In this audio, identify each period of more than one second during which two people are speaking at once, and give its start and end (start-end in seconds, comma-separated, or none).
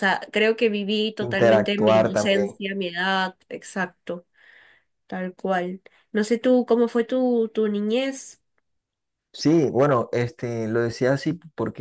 1.2-2.6